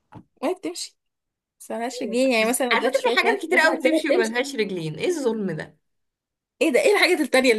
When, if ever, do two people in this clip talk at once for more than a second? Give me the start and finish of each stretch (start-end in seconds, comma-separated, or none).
1.9-4.3